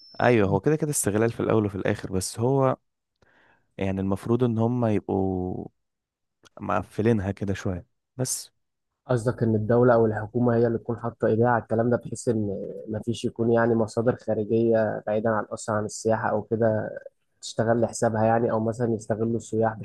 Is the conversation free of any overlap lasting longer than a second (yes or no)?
yes